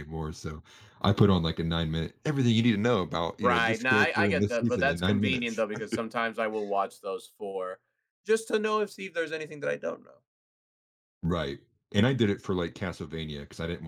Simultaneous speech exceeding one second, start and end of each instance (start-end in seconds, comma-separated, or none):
3.4-5.7